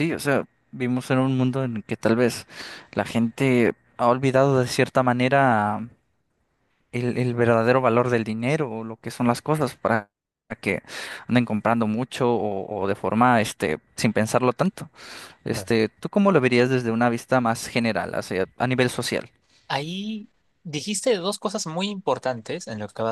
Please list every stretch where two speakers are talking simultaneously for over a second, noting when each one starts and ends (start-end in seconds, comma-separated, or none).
none